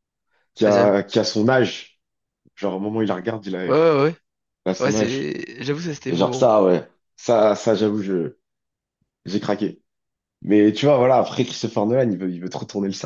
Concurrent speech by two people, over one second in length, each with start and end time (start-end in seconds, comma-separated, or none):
none